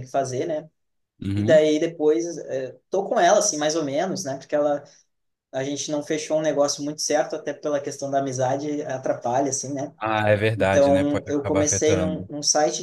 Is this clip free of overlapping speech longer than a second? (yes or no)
no